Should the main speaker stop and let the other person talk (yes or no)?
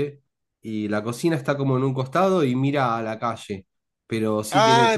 yes